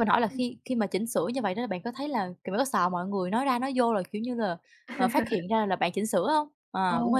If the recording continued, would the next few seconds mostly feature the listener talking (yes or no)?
yes